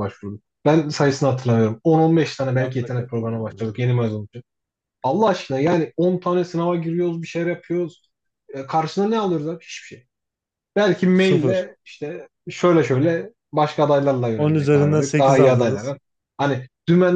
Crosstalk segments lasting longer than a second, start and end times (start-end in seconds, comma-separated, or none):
2.5-3.8, 14.4-15.9